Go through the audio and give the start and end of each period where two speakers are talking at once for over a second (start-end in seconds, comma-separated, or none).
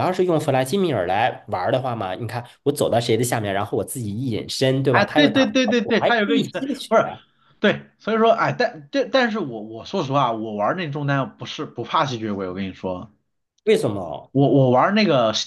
4.9-6.9